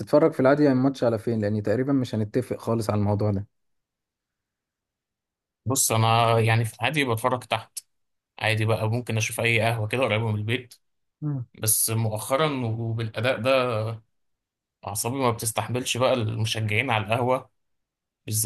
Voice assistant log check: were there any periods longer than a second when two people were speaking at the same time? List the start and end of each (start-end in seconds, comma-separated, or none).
none